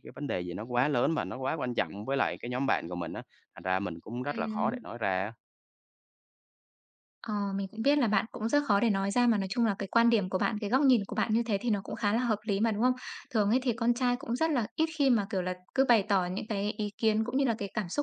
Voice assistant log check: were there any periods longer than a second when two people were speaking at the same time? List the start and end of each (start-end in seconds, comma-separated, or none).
none